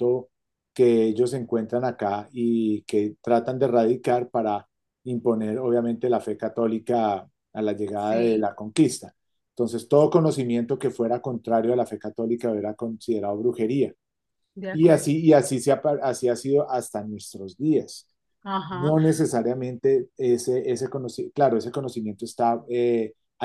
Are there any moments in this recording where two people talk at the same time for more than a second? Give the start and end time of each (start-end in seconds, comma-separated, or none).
none